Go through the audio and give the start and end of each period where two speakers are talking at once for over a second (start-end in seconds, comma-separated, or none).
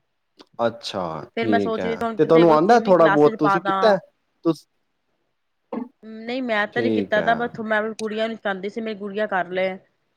1.4-3.8